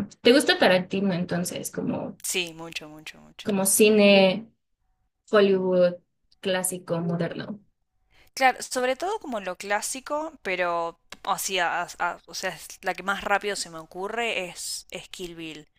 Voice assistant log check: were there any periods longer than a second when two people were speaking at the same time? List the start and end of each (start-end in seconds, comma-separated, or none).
none